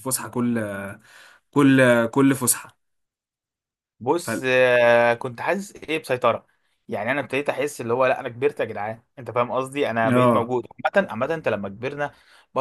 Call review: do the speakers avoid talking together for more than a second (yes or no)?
yes